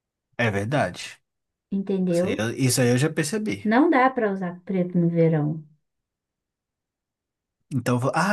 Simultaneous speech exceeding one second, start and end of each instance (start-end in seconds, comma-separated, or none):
none